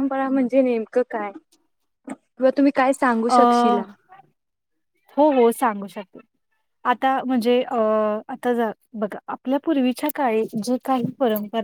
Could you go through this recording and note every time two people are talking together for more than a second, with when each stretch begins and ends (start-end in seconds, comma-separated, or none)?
none